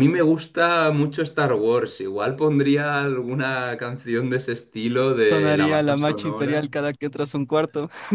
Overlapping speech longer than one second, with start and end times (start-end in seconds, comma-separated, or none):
5.3-6.7